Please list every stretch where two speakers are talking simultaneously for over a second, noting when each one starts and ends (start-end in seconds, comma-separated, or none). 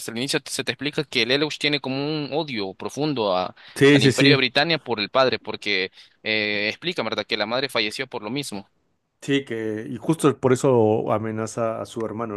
none